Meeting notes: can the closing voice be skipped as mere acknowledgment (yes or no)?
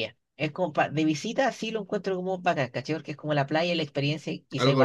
yes